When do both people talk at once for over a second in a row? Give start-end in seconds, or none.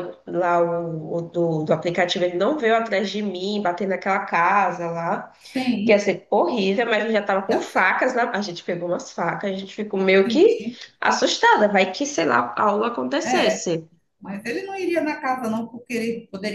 none